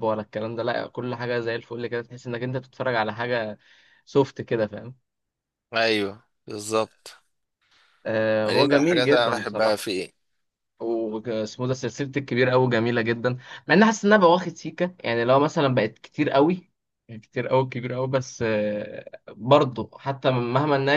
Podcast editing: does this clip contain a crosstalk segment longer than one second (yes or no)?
yes